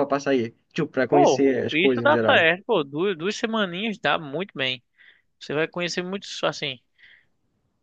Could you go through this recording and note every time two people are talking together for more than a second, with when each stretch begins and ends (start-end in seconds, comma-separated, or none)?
1.1-2.5